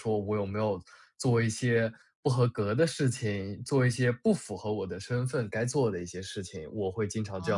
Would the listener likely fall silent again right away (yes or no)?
no